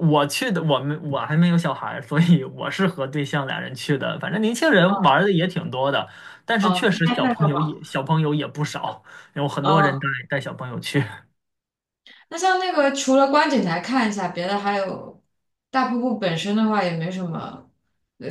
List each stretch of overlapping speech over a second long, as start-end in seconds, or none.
6.6-7.8